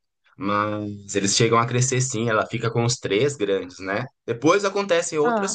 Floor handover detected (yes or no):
no